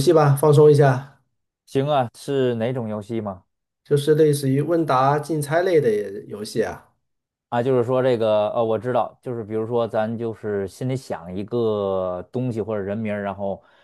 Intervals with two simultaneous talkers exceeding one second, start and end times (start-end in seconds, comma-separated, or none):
none